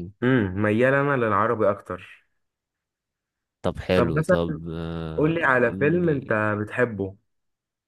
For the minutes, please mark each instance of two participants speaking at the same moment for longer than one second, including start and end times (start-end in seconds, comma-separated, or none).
5.2-6.4